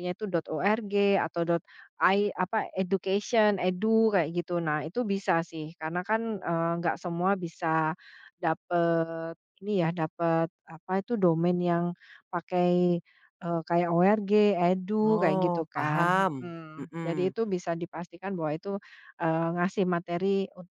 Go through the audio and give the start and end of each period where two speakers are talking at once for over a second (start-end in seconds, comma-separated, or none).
15.0-17.3